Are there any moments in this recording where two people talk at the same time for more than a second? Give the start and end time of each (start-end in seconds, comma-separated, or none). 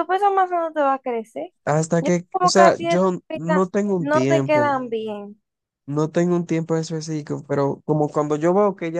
2.0-4.8